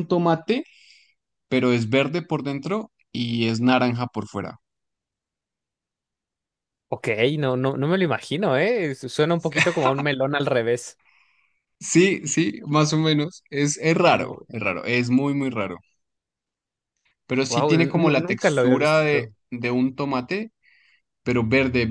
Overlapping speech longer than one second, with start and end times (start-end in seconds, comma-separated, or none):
17.5-19.3